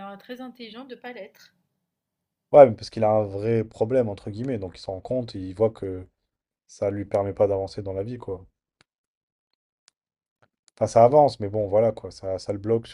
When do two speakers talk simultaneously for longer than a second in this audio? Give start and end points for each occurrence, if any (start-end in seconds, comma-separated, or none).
none